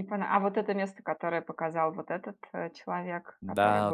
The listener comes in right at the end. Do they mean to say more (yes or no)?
yes